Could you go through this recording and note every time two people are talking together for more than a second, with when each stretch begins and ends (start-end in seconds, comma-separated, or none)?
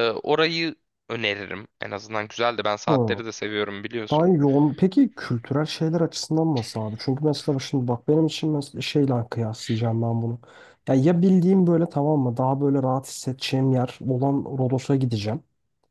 none